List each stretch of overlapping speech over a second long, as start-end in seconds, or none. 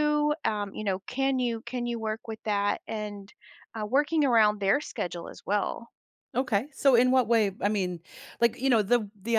none